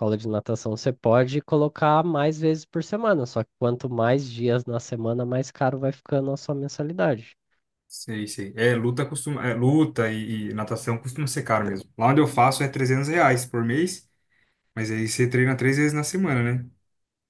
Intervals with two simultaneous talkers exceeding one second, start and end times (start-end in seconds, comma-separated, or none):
none